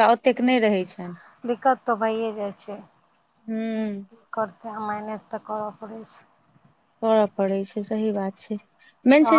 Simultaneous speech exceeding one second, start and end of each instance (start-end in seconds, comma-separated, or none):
none